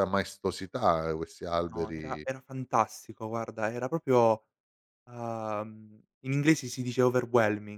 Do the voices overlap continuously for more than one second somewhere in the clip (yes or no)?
no